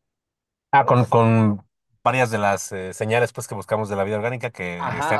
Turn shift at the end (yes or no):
yes